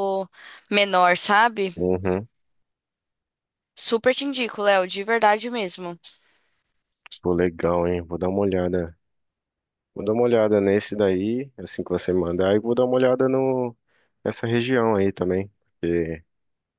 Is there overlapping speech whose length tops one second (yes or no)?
no